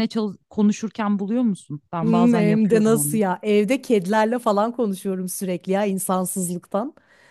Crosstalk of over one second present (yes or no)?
yes